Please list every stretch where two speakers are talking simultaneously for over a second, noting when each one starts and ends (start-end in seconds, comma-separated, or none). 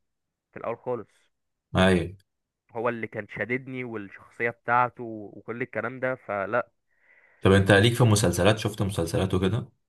none